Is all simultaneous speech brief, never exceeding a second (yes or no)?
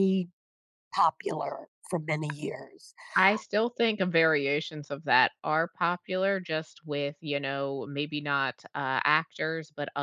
yes